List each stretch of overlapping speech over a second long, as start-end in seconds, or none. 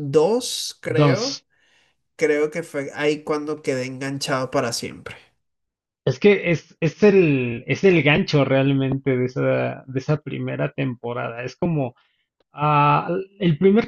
none